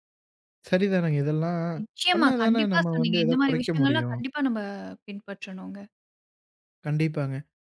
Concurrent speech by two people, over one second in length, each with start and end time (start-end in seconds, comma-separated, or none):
2.1-4.2